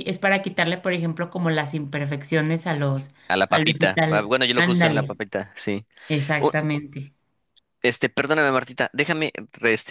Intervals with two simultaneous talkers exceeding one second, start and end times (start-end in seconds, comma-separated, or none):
3.5-5.2